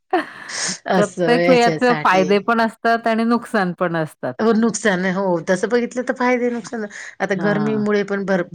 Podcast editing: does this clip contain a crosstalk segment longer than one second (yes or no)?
yes